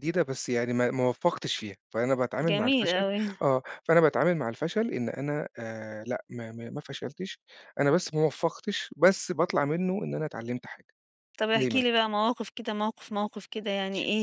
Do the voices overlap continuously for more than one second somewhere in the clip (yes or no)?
no